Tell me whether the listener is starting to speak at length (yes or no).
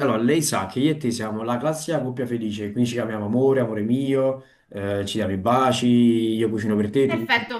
yes